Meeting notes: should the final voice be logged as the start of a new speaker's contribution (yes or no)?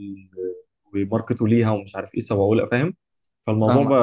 no